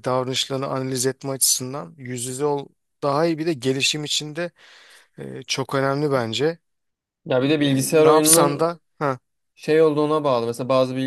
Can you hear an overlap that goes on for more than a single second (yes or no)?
yes